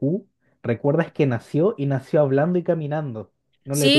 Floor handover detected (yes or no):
yes